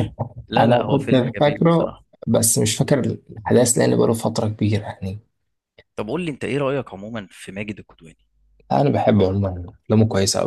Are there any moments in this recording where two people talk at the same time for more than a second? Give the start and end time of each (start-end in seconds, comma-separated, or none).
0.6-2.0